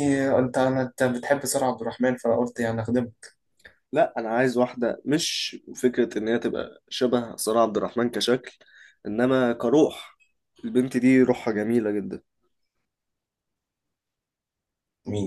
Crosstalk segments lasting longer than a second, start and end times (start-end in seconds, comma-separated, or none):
none